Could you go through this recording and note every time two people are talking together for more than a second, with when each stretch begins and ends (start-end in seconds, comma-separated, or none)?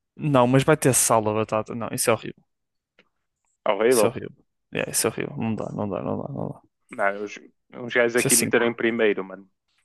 none